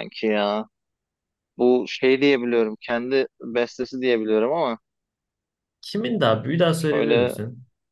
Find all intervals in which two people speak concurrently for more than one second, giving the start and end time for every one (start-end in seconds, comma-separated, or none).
none